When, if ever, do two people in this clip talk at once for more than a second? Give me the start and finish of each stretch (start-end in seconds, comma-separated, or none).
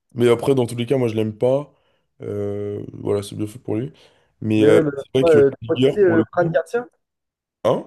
4.6-6.6